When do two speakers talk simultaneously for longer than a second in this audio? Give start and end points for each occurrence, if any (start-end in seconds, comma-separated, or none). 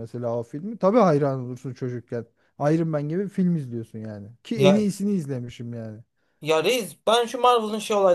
none